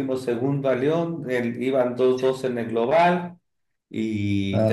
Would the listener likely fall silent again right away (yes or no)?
yes